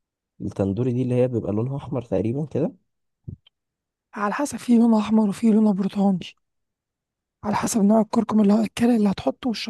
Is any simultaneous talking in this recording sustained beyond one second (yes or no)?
no